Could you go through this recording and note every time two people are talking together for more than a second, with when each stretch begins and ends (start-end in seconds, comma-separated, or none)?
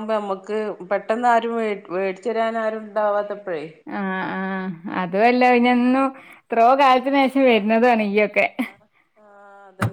none